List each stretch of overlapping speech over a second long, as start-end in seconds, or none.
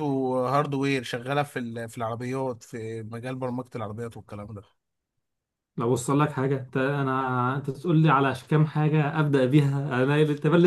none